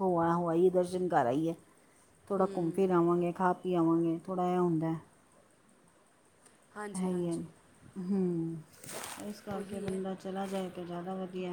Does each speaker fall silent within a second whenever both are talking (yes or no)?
yes